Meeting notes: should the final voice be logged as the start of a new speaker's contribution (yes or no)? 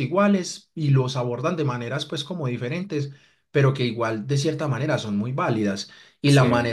no